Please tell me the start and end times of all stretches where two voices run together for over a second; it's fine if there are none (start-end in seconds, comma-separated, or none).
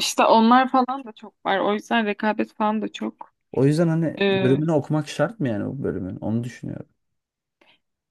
none